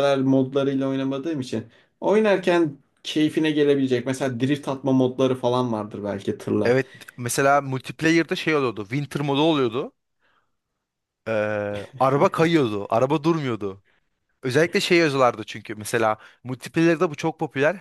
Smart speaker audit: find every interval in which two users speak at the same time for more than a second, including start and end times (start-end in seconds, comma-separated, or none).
none